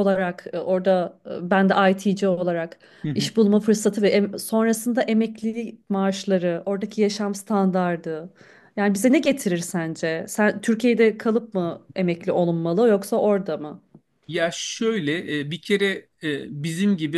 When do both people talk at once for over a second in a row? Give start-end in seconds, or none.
none